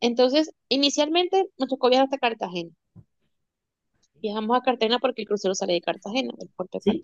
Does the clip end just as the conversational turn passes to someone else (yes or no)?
yes